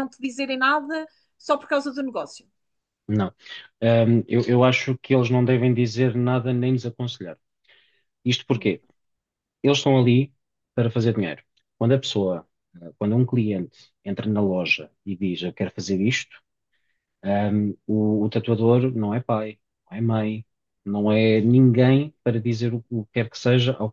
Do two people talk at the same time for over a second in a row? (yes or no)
no